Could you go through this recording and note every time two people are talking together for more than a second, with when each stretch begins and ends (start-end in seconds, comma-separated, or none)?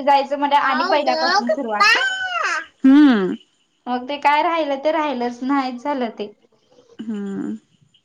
0.6-1.9